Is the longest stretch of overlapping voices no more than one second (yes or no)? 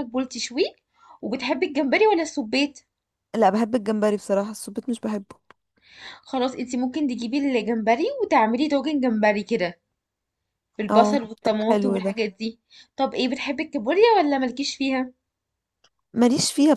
no